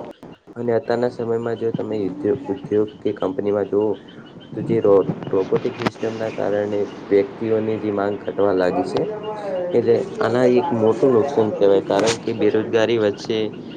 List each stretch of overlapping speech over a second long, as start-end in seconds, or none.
9.8-12.8